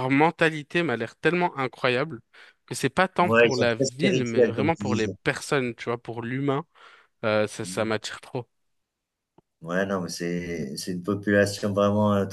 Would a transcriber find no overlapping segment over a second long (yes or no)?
no